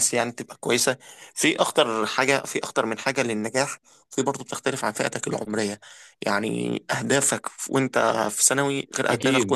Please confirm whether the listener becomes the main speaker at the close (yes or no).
no